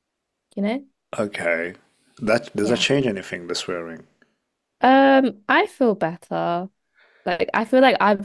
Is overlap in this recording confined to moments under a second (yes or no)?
yes